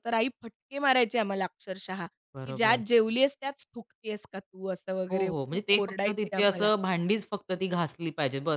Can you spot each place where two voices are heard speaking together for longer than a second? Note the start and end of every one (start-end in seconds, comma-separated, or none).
5.1-6.7